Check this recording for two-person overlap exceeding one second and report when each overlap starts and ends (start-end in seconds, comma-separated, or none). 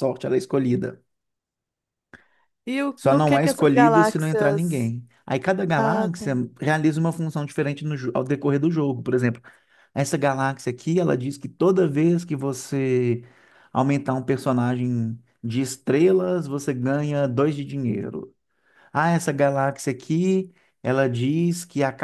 3.0-4.9